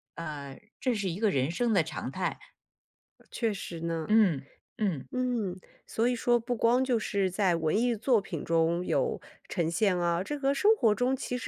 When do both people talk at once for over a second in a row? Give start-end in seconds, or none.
none